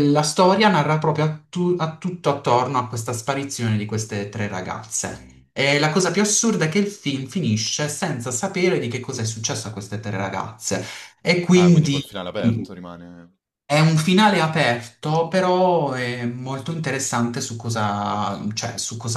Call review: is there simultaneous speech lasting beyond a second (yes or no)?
no